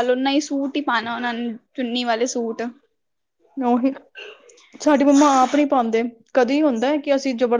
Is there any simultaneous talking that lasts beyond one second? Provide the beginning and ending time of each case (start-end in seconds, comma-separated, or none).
none